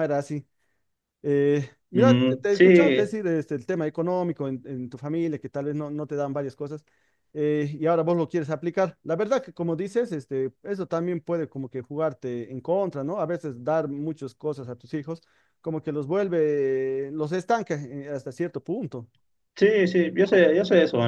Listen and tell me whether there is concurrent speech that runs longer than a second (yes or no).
yes